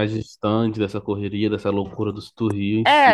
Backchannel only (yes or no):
no